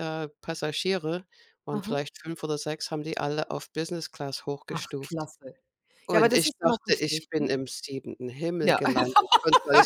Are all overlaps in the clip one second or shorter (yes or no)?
no